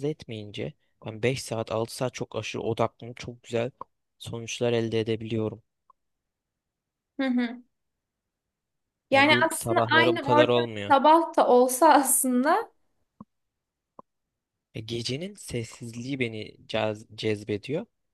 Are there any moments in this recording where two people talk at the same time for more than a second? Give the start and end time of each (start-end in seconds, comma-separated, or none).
9.1-10.9